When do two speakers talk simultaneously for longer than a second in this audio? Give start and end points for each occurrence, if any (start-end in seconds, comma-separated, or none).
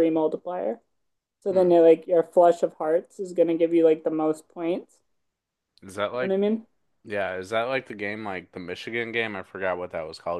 none